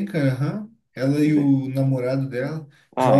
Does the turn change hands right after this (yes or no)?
yes